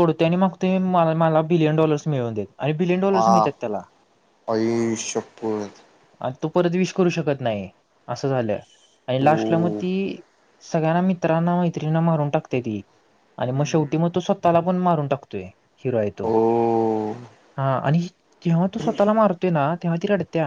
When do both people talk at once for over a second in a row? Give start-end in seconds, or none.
none